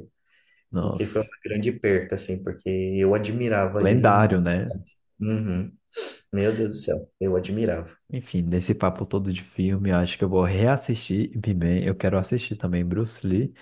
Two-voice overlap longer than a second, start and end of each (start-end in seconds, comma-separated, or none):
none